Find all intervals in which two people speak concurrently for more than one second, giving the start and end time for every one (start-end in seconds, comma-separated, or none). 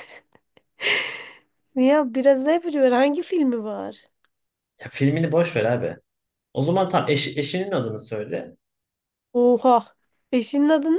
none